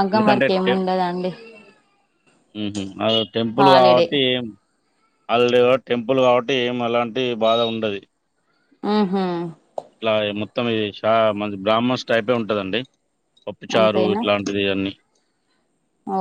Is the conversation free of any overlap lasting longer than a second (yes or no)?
yes